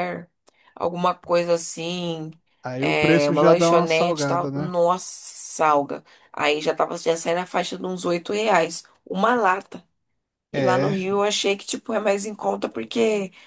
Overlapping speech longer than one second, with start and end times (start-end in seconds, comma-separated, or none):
2.8-4.7